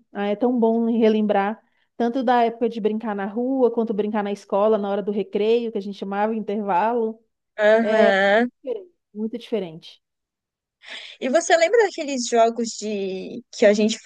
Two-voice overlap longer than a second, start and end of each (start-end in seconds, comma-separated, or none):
none